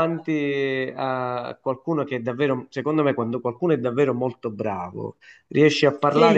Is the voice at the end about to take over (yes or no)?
no